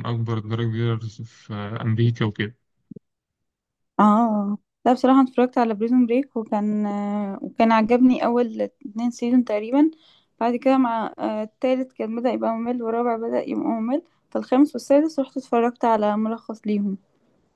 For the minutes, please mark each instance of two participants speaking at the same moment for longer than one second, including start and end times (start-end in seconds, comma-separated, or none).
none